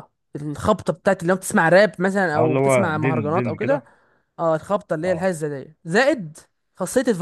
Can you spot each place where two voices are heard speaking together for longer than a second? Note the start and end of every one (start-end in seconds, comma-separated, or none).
2.4-3.8